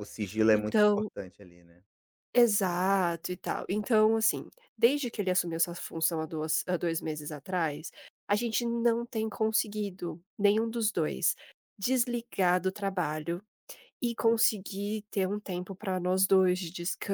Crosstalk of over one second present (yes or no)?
no